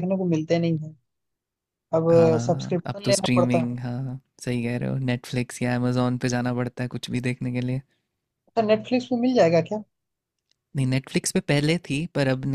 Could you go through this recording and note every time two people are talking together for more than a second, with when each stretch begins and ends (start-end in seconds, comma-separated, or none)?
2.5-3.8